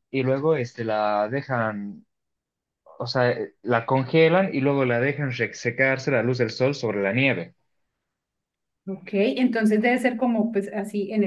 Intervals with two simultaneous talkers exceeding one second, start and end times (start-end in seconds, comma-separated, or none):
none